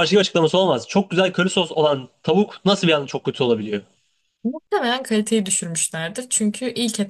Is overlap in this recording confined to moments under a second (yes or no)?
yes